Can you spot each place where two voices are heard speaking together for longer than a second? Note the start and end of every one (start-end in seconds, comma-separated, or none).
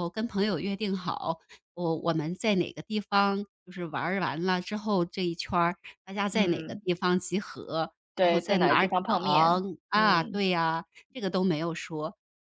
8.2-10.4